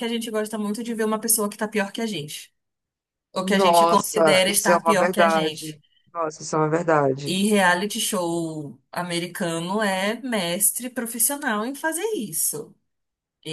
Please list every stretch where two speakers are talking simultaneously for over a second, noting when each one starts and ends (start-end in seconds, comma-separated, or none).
3.4-5.8